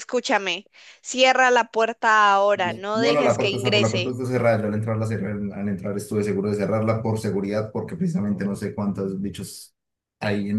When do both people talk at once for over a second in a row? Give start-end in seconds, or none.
2.5-4.2